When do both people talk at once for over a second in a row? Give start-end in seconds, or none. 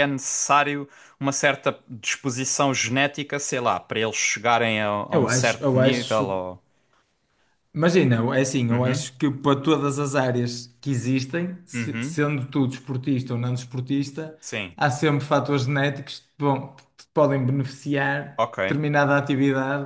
5.1-6.4